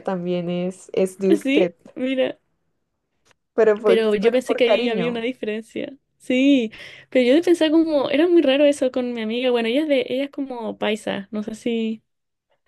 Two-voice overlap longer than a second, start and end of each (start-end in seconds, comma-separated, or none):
3.8-5.2